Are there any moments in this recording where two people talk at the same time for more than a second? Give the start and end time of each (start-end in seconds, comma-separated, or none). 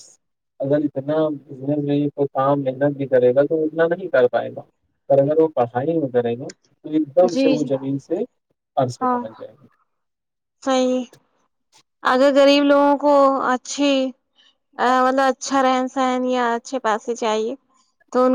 none